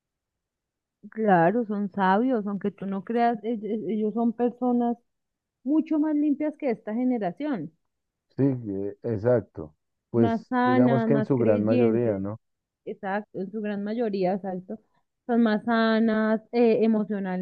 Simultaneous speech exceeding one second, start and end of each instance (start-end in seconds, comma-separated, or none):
10.1-12.2